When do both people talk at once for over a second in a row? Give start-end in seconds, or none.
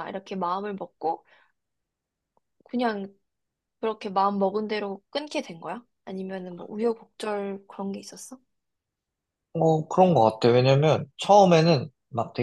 none